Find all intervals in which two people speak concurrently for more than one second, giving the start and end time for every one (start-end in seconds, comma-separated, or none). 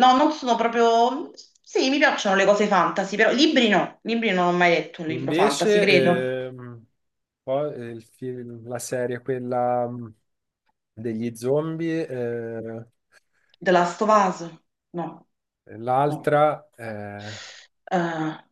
5.1-6.3